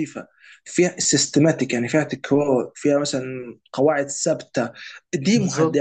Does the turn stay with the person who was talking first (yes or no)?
yes